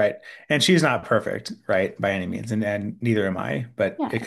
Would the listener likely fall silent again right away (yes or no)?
yes